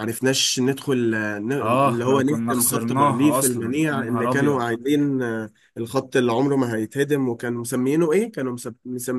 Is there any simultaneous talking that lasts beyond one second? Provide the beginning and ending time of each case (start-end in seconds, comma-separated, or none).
1.9-4.6